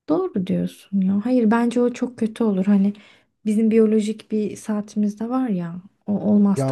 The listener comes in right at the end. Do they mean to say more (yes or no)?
no